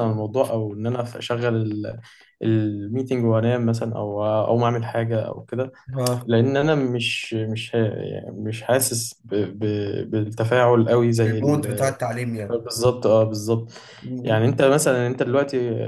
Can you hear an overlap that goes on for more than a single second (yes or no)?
no